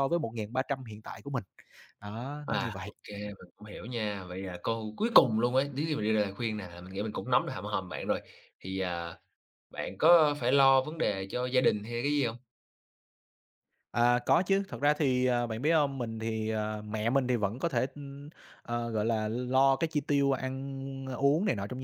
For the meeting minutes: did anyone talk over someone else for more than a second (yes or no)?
no